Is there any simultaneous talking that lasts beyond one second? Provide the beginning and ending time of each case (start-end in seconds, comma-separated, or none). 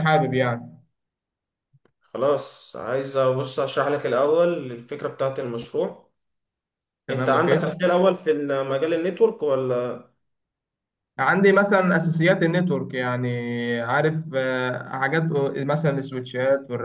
none